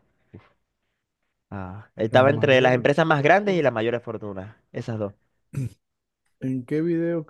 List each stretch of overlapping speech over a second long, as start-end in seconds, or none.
2.1-3.7